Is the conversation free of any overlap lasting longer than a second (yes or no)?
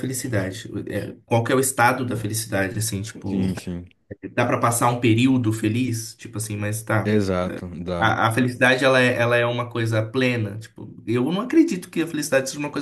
yes